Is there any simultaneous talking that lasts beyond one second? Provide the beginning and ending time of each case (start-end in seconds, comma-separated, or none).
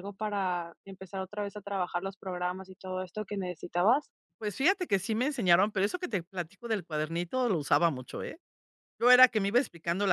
none